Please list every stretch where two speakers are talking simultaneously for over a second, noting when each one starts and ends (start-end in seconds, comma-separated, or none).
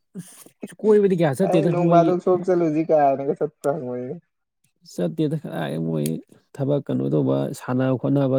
none